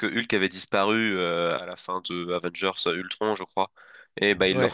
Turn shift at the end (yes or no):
no